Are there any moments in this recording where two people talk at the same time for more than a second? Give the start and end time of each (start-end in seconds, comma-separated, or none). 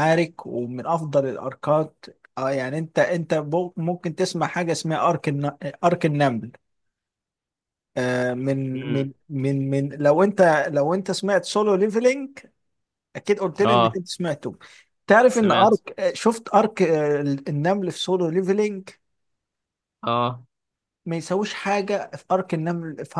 none